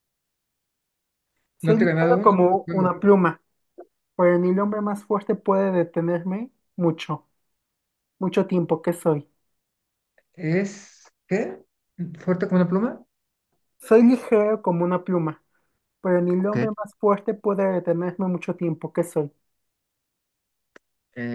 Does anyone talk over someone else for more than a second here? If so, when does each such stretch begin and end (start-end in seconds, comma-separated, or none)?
1.6-2.9